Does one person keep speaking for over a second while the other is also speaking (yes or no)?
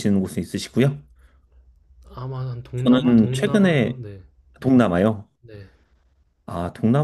yes